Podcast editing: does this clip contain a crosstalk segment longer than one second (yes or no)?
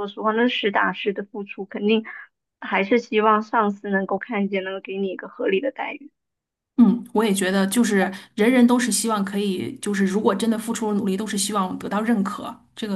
no